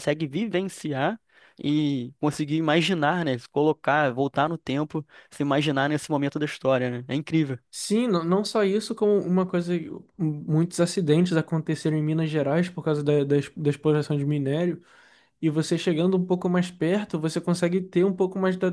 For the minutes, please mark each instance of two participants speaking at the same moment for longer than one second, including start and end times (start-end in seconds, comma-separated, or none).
none